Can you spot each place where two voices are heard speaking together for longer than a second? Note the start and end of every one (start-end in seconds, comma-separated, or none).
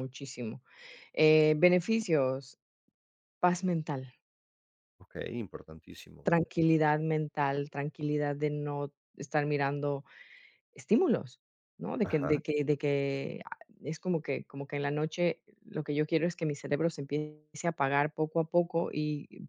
none